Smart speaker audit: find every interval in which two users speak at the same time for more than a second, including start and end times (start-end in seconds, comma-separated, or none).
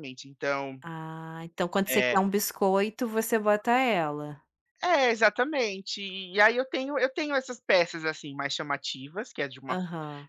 none